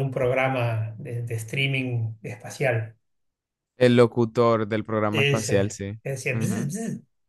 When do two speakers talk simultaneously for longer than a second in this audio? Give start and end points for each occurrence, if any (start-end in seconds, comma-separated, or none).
5.1-6.7